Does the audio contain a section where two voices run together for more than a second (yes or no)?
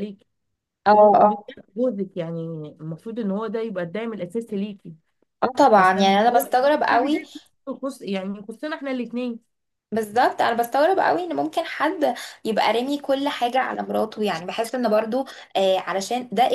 yes